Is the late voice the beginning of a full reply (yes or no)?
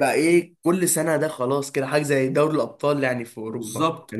yes